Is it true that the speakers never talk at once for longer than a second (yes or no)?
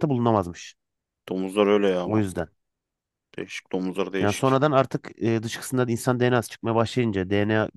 yes